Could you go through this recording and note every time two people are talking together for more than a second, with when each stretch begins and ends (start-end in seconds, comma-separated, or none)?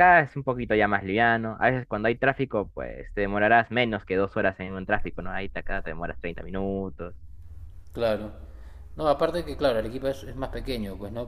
none